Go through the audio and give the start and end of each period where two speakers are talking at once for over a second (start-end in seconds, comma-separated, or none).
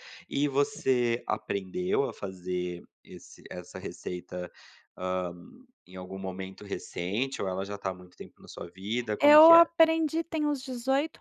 none